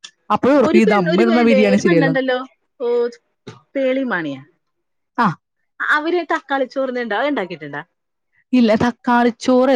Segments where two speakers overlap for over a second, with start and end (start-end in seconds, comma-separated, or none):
0.7-2.2